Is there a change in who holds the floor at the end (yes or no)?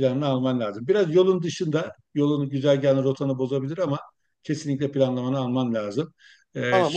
yes